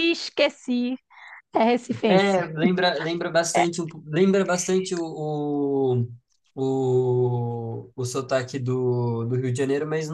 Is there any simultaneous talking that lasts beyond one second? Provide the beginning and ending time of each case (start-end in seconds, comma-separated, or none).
none